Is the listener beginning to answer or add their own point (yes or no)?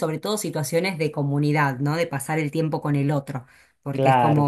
no